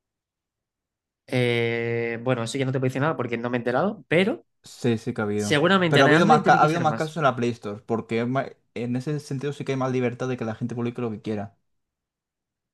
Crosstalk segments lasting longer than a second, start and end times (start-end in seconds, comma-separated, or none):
5.3-7.2